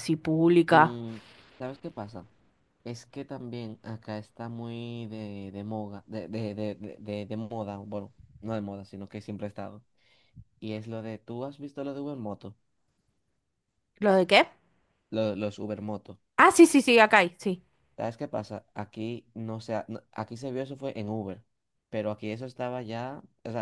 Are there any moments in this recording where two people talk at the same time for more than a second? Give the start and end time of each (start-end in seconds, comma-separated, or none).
none